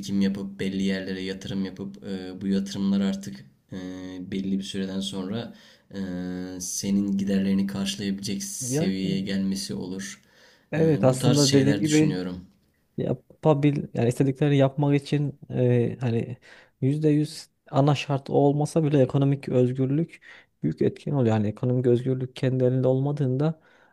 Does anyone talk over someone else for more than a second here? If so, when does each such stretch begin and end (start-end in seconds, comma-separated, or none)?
10.8-12.2